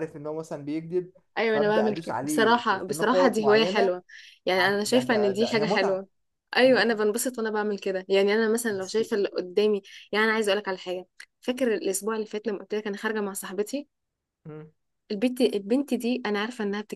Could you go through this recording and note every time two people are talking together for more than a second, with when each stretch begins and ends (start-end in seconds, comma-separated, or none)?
1.5-3.9, 4.6-6.0